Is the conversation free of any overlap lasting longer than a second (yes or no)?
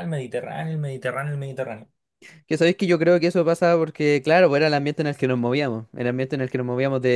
yes